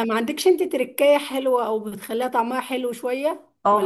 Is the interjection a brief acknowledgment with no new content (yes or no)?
no